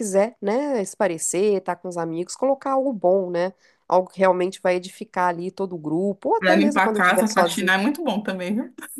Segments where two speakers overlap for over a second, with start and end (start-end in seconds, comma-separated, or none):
6.4-7.7